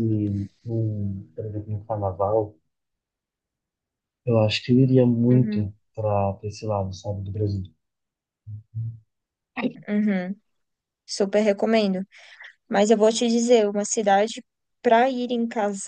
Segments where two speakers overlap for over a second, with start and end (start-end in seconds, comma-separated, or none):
none